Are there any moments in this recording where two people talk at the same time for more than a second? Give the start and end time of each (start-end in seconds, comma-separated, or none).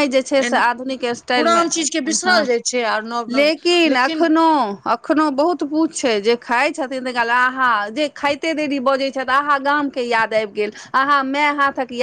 none